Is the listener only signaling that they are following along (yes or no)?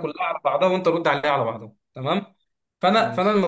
yes